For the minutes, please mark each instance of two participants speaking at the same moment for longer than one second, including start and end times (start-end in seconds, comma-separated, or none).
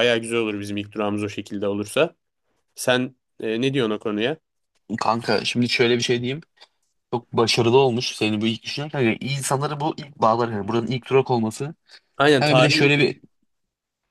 none